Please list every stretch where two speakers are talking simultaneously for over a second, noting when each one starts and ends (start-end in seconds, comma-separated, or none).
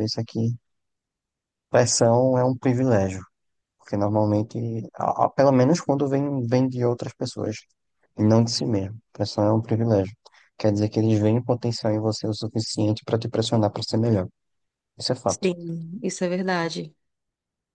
none